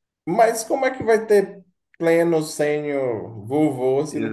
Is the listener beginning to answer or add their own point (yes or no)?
yes